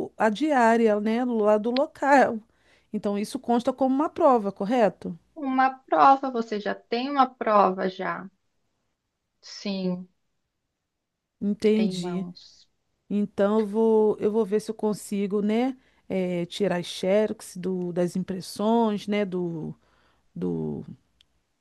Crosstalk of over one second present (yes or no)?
no